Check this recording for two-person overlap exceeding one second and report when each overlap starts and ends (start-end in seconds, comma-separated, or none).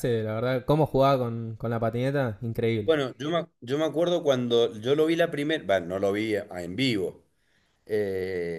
none